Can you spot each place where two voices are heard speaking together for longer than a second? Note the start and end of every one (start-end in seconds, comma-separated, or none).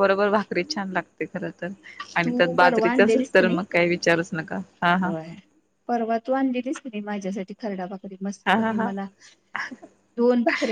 2.2-3.6